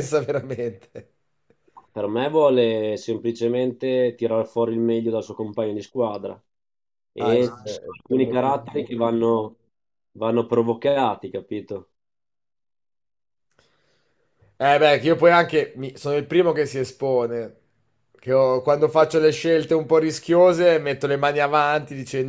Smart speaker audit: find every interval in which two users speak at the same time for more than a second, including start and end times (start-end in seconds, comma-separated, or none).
7.2-9.0